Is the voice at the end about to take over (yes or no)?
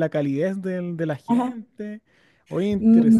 yes